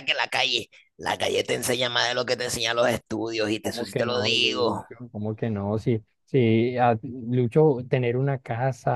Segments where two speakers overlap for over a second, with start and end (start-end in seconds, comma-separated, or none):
3.6-4.8